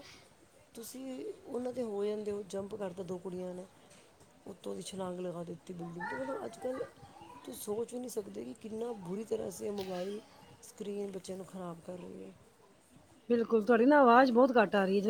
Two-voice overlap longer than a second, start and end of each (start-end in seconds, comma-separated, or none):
none